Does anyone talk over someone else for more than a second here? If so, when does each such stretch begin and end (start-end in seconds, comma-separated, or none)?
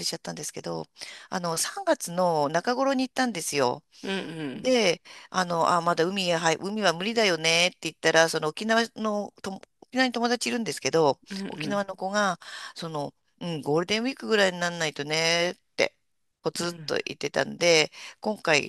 none